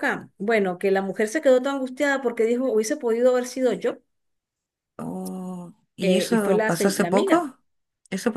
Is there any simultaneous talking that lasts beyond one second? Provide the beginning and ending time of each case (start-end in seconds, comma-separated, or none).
6.0-7.5